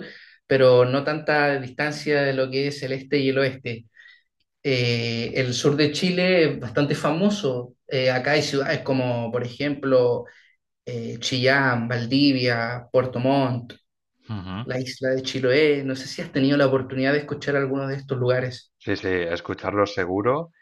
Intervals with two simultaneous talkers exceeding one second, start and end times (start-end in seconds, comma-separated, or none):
none